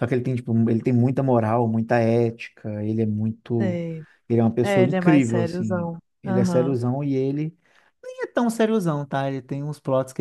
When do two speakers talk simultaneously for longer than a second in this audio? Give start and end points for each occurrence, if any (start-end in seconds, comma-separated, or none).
4.6-6.8